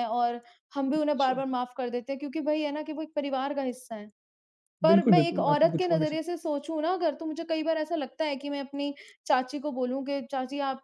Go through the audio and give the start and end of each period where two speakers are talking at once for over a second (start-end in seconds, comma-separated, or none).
4.9-6.3